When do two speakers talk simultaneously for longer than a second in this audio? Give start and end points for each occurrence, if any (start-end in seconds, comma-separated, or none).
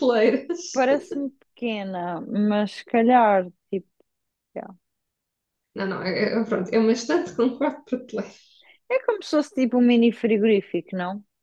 none